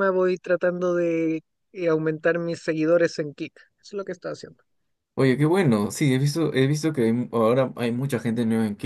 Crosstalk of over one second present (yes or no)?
no